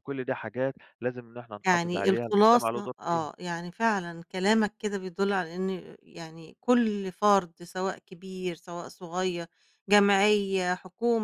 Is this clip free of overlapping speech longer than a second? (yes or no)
no